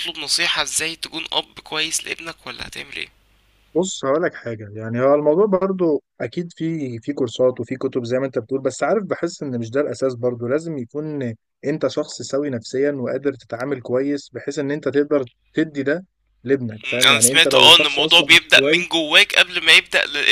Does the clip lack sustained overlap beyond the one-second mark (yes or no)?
no